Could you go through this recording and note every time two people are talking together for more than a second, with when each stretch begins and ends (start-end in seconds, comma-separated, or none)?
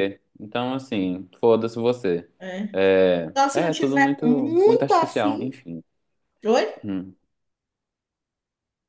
3.4-5.6